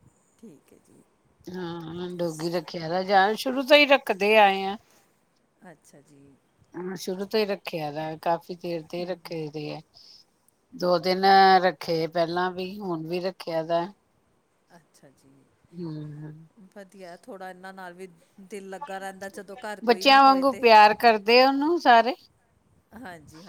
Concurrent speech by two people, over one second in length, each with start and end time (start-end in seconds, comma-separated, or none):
none